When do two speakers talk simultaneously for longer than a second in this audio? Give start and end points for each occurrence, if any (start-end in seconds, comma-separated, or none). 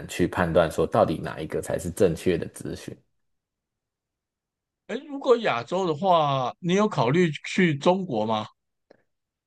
none